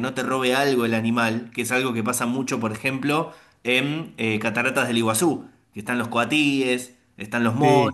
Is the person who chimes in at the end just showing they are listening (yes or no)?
yes